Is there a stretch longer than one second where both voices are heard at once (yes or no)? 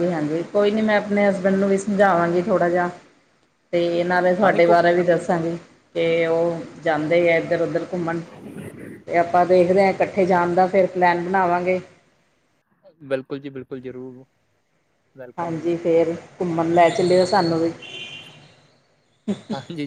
no